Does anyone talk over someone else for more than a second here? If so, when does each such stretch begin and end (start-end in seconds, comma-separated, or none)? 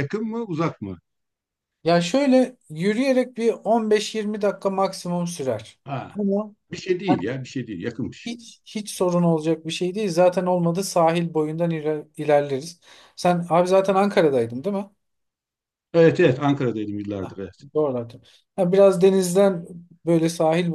none